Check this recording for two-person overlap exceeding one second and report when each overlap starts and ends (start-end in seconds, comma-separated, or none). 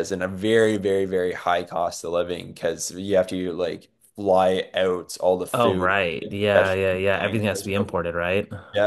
5.5-8.0